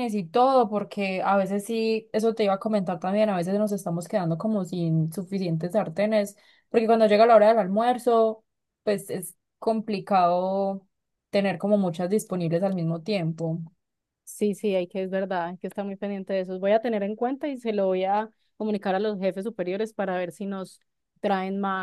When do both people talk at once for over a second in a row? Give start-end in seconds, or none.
none